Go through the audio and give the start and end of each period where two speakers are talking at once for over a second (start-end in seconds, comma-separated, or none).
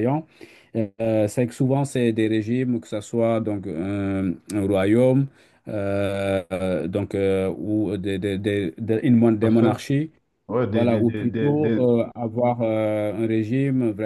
10.7-11.9